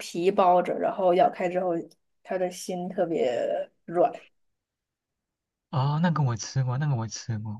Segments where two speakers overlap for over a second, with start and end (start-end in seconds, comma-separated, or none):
none